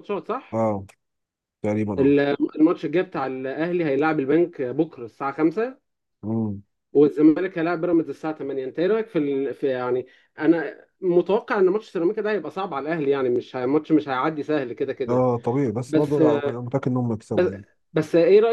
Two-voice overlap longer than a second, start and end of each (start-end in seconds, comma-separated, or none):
none